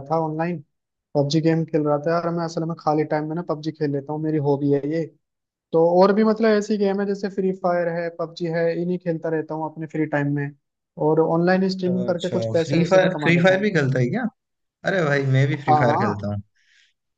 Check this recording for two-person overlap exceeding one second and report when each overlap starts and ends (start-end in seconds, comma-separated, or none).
11.9-13.7